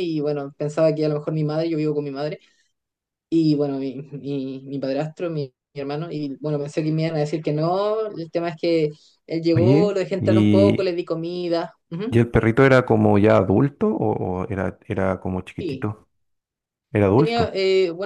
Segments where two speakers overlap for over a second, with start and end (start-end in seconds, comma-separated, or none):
9.5-10.9